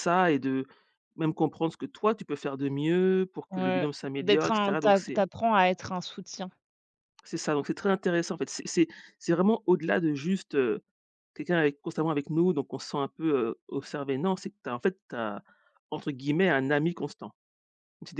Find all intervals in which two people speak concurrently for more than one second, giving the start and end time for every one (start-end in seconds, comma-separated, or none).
3.5-5.0